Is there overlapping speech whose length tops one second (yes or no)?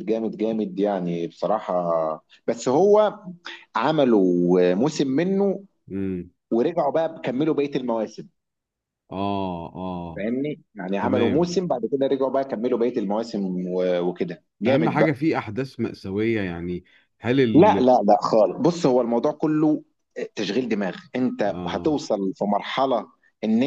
no